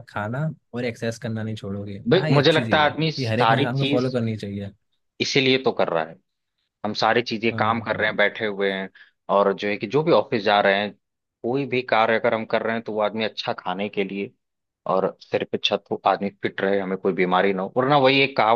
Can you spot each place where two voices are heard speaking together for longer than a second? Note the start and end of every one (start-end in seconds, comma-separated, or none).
2.1-4.2